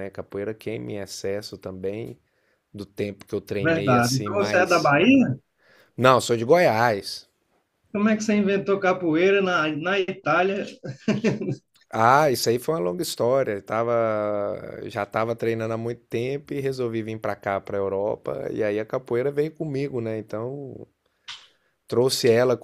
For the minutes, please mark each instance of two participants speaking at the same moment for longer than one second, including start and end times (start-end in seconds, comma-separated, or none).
3.6-4.9